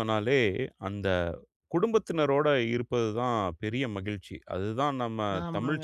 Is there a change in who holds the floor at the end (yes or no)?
no